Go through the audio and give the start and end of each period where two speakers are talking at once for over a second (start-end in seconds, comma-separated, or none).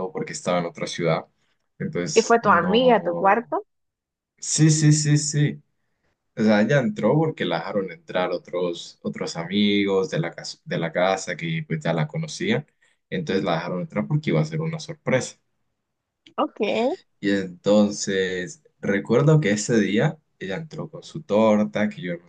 2.1-3.5